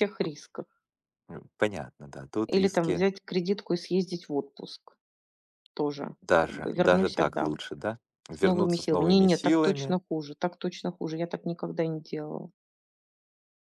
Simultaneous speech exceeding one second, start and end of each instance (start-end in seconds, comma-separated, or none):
6.2-7.6, 8.3-10.0